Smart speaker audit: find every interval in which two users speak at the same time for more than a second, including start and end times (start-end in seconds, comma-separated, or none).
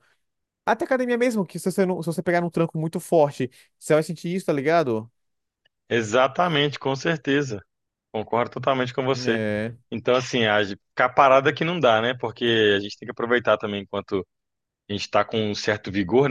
none